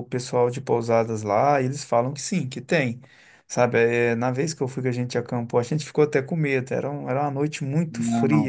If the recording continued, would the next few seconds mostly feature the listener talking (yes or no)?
no